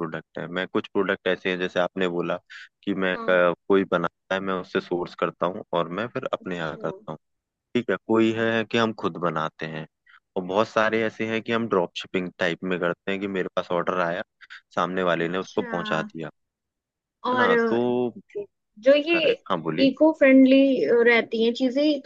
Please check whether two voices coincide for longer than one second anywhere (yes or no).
no